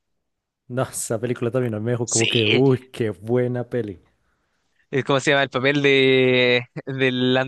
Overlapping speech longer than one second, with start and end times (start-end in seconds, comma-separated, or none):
none